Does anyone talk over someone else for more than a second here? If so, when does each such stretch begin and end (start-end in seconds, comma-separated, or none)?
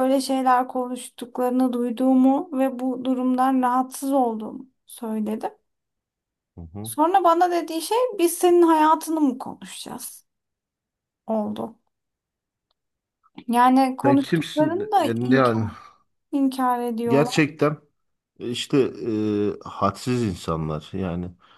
14.0-15.7